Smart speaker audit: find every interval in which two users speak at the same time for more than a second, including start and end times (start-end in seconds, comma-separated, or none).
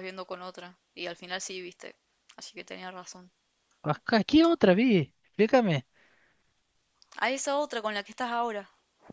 none